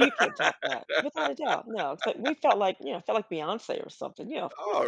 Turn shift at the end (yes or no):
yes